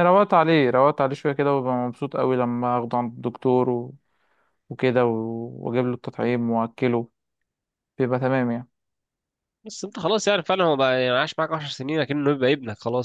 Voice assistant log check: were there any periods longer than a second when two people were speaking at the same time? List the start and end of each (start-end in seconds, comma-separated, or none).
none